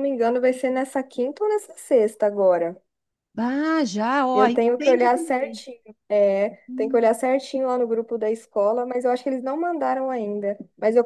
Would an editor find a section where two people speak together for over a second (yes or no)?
yes